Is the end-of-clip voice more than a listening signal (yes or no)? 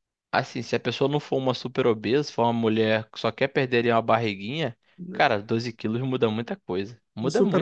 yes